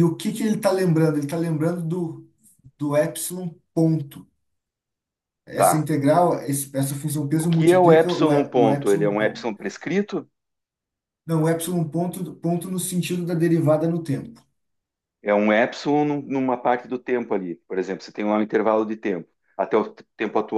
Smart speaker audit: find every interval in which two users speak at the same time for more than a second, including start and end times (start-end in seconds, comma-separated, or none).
7.4-9.5